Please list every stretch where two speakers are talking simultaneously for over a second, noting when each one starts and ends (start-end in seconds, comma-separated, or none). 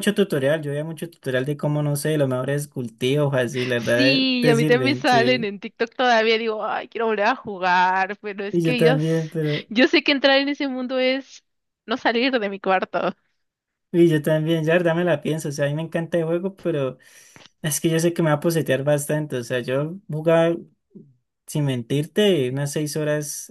3.8-5.5